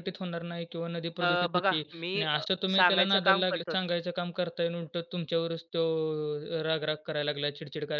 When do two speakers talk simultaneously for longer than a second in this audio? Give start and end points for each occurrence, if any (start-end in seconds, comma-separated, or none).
1.2-3.8